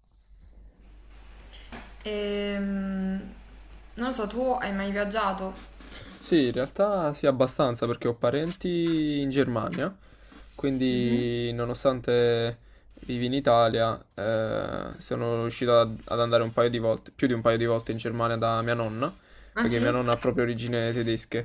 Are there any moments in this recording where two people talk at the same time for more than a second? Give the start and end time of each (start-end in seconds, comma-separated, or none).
none